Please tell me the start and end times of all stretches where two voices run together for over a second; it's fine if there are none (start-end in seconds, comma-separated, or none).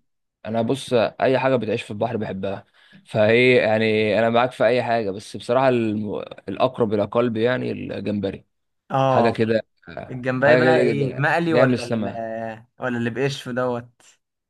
10.4-12.0